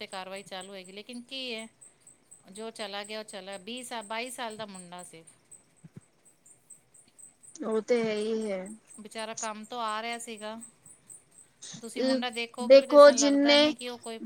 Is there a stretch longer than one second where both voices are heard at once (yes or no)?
yes